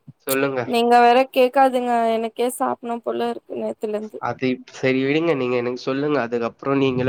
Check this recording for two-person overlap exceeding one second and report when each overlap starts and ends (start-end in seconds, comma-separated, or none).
none